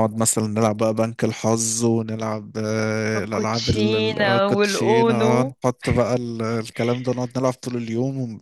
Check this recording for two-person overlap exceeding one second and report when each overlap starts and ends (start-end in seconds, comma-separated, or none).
3.2-5.6